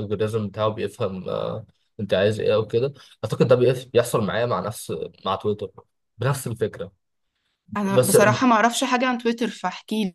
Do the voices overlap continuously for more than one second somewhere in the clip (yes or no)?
no